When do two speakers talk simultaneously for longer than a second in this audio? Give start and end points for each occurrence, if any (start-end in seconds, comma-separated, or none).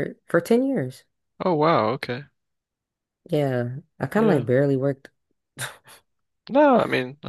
none